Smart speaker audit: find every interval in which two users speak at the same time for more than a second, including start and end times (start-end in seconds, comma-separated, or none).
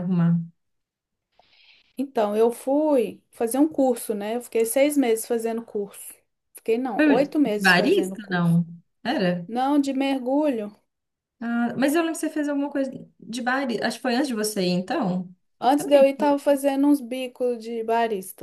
7.0-8.6